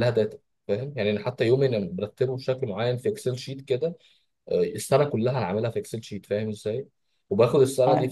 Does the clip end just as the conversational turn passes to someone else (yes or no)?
no